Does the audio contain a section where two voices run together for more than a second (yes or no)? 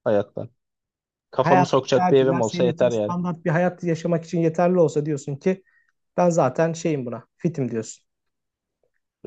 yes